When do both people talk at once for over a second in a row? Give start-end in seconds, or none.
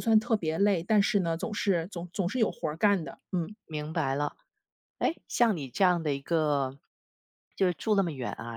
none